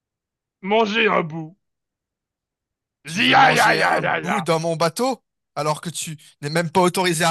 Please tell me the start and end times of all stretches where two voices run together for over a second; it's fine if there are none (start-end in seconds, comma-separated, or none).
3.1-4.4